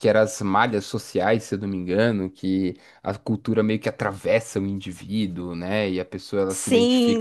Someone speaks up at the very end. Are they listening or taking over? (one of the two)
taking over